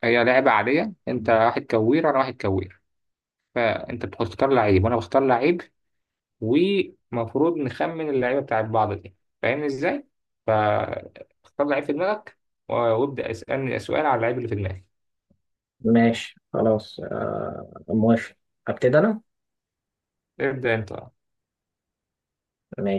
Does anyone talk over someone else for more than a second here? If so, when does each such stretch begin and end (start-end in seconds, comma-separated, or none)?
none